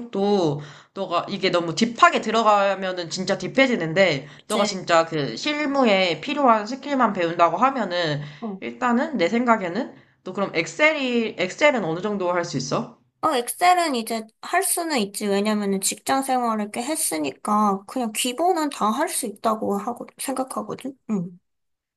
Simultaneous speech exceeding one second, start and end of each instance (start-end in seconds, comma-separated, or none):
none